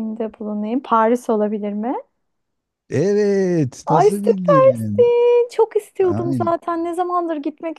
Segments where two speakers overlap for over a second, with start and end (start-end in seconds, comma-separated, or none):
3.8-5.1